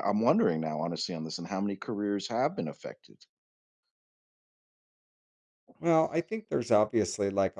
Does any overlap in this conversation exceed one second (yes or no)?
no